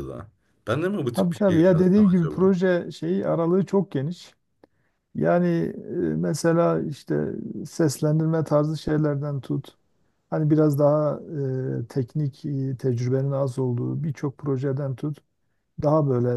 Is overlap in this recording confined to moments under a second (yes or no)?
no